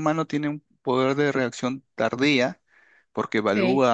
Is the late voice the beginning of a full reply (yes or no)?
no